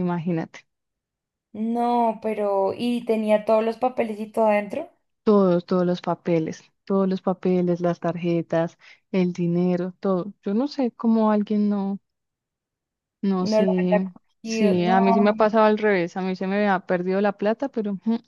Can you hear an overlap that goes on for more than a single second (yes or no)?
yes